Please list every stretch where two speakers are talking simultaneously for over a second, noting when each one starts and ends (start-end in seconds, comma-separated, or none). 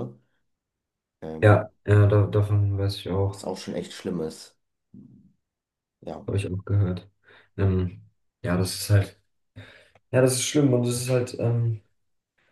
none